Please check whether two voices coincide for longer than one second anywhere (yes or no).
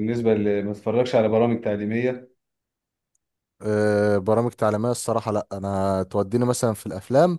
no